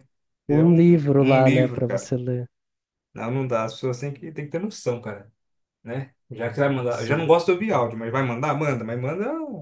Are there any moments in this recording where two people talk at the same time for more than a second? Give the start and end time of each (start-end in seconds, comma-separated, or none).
0.5-2.1